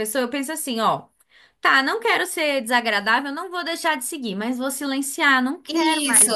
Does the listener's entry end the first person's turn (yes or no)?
yes